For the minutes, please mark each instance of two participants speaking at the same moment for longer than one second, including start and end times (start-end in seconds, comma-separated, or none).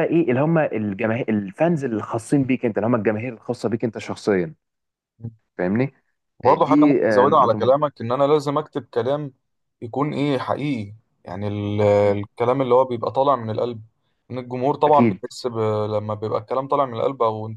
6.4-7.8